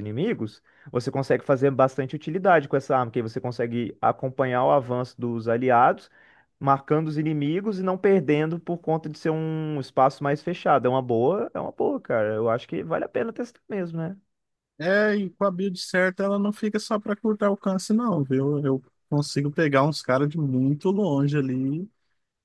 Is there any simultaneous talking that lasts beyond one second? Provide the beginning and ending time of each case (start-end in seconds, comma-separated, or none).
none